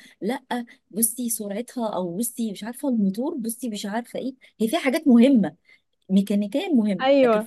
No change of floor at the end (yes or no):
yes